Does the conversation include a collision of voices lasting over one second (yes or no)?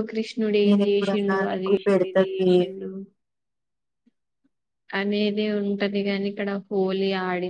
yes